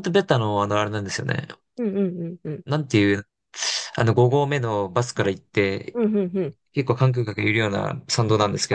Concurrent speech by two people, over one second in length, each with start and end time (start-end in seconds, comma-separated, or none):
none